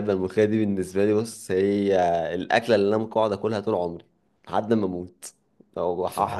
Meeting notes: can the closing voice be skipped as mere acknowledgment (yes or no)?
yes